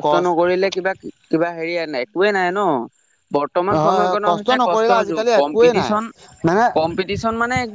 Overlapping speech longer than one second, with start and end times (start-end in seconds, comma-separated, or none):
3.7-5.9